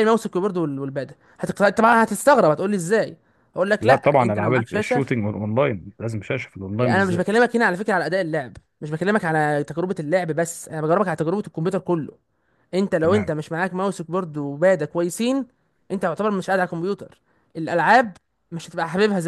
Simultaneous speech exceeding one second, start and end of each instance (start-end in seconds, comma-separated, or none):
3.8-5.0